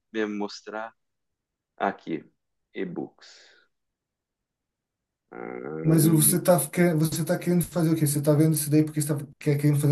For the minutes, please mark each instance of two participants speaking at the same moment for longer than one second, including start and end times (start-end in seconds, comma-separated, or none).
none